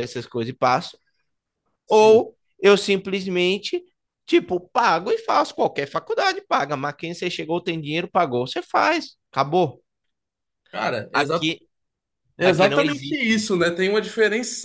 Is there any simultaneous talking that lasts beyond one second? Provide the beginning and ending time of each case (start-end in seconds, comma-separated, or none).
12.4-13.6